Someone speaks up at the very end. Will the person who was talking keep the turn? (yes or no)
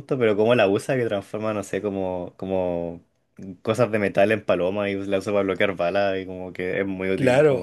no